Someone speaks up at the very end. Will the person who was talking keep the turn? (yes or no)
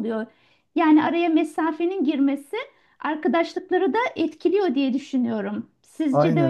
no